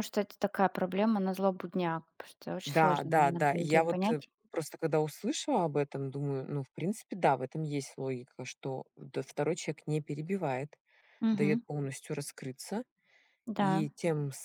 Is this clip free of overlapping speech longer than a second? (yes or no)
no